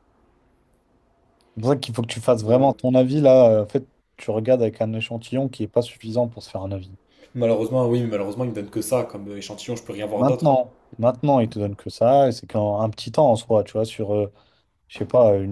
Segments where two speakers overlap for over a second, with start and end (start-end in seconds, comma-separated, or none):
none